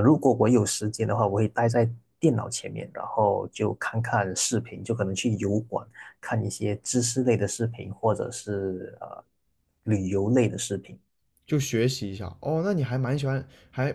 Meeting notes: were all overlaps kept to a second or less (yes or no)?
yes